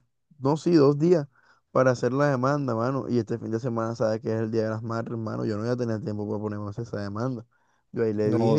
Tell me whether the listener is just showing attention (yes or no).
yes